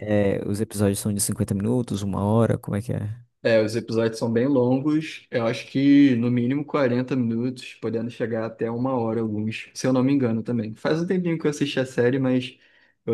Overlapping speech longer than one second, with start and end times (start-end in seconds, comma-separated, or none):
none